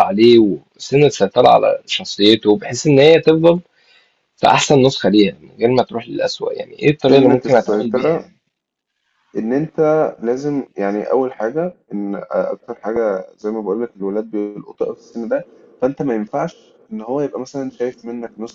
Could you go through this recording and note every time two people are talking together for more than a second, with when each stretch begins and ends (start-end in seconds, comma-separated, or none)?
7.1-8.3